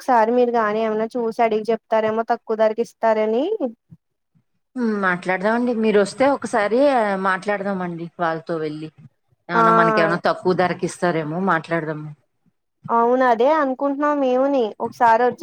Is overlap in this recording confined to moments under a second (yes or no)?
yes